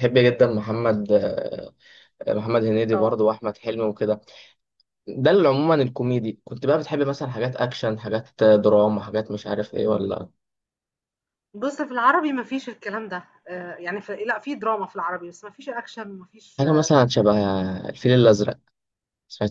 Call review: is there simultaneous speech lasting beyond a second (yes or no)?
no